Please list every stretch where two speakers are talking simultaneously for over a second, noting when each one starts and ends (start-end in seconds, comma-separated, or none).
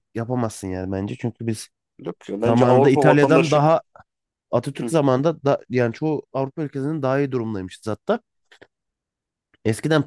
2.4-3.6